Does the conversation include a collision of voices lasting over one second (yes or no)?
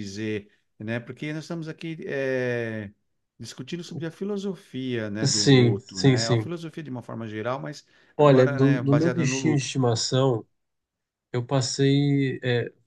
yes